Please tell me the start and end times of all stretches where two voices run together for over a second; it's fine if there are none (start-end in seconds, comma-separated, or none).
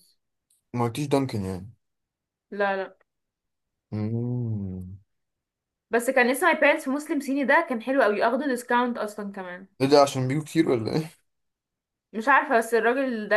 none